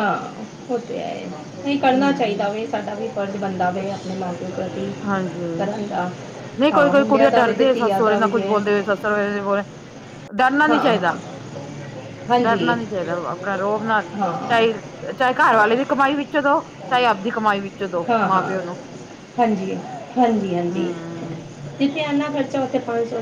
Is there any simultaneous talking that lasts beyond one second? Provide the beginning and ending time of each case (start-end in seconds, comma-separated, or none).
6.7-8.5